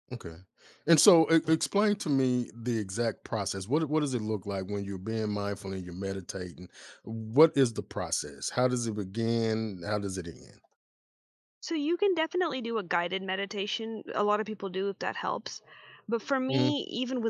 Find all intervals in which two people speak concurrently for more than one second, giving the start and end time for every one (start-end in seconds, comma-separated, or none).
none